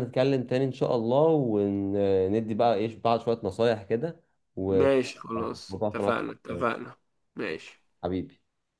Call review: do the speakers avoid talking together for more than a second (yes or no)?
yes